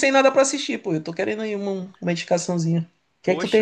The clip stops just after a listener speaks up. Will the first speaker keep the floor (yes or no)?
no